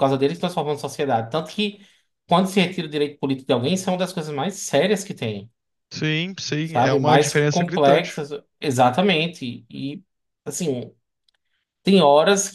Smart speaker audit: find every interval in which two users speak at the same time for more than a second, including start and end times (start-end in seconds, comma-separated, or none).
6.6-8.2